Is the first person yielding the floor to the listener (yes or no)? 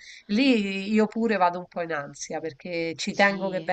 no